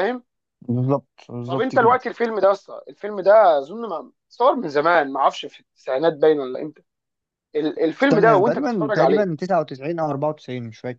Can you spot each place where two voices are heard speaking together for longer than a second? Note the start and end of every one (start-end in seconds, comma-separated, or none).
8.0-9.3